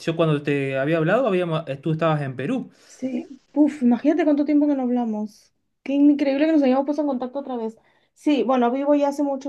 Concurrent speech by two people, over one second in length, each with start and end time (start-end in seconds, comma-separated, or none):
none